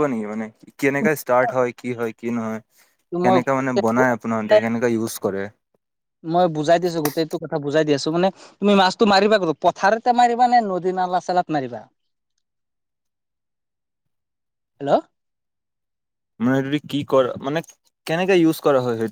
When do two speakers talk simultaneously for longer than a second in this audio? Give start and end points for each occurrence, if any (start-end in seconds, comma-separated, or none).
3.3-4.5